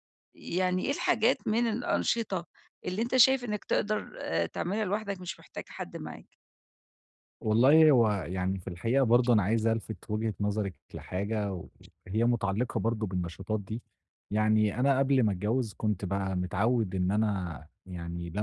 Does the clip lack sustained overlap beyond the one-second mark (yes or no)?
yes